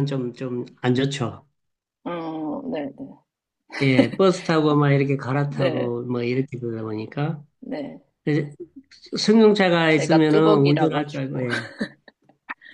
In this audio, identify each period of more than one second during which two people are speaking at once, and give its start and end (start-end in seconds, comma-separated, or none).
9.9-11.4